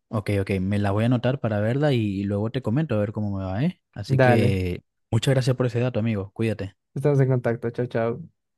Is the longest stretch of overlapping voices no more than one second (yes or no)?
yes